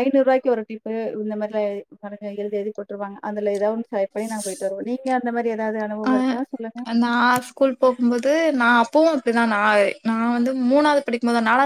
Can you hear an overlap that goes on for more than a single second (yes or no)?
no